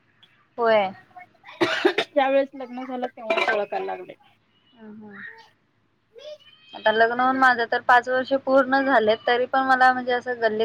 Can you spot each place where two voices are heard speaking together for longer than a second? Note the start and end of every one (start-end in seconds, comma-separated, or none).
none